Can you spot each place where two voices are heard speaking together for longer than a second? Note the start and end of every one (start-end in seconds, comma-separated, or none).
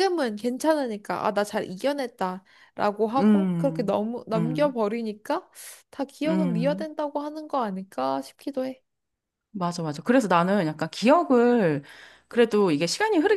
3.2-4.8